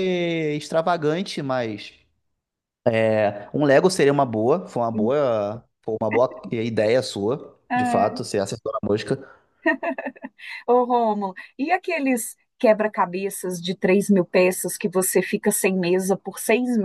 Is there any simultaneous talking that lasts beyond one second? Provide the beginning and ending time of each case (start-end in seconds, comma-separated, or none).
none